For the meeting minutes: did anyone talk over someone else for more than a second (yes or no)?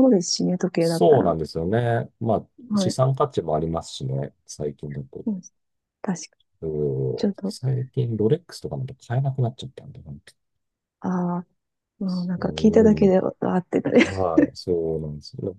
no